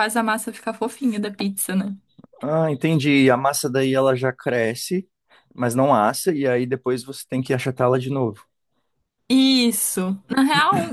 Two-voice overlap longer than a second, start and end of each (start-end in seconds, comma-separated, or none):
none